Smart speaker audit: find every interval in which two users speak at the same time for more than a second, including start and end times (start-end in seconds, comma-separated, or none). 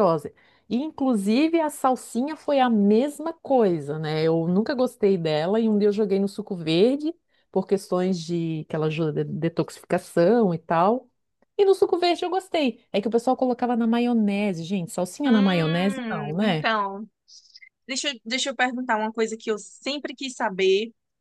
15.3-16.7